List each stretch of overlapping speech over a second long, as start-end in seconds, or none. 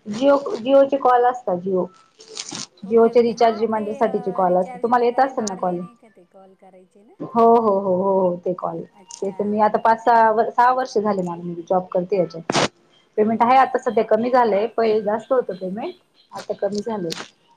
2.9-5.8